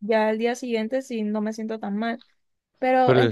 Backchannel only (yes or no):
yes